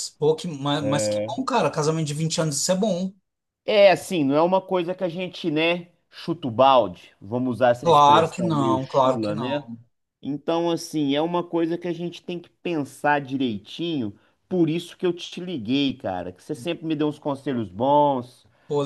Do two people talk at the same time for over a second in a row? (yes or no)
yes